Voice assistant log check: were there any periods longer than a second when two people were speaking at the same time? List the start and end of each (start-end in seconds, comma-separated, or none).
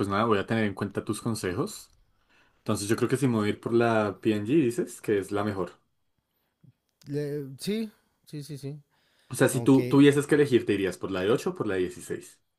none